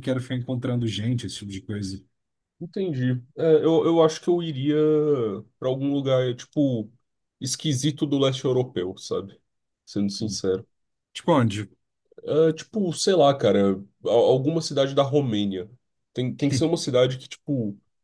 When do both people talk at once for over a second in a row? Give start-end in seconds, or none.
none